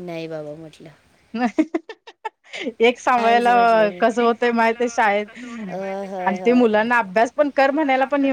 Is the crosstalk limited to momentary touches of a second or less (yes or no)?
yes